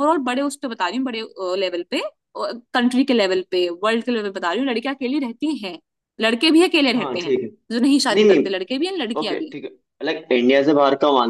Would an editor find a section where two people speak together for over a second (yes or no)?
no